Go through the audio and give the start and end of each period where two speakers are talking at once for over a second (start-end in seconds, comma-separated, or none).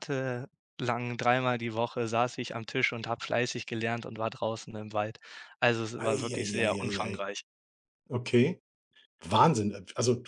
6.0-7.2